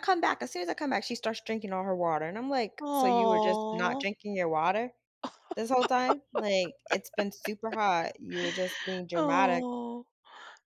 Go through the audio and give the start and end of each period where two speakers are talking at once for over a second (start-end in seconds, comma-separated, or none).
2.8-4.0